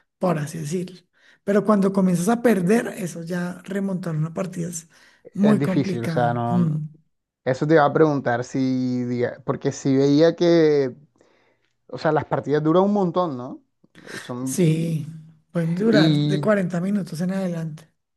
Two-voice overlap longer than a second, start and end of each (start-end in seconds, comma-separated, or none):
5.4-6.8